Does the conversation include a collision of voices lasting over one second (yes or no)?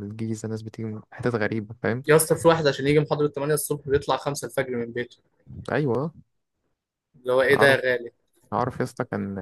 no